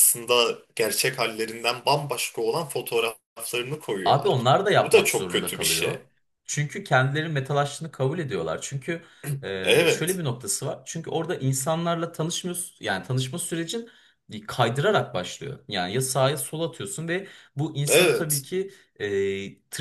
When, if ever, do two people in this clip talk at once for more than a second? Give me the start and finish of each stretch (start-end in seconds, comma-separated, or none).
4.0-6.0